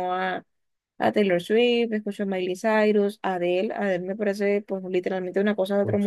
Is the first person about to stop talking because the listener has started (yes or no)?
yes